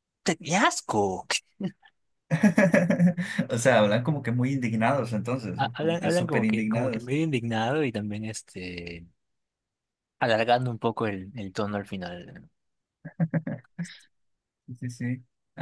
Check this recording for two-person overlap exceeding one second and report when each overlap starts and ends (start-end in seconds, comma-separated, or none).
5.6-7.1